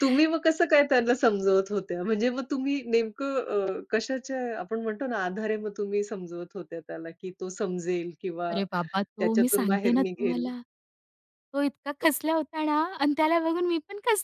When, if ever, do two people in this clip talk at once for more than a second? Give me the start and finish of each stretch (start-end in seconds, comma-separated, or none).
9.2-10.5